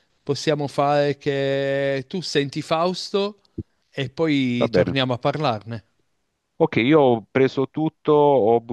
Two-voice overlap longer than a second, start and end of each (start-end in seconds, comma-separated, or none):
none